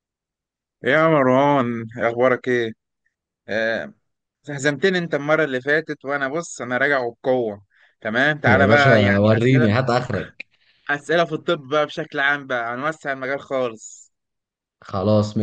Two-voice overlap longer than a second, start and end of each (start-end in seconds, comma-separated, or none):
8.5-9.7